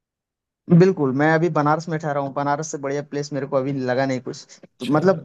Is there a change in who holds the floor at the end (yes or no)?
no